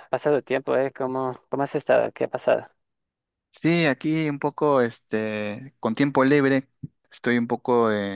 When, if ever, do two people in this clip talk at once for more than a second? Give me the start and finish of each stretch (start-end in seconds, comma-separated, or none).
none